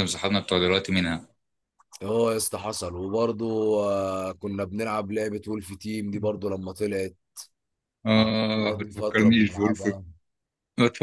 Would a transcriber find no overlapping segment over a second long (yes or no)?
no